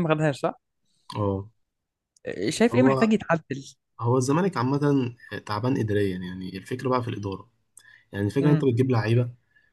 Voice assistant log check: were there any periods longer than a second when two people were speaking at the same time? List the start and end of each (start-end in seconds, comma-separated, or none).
none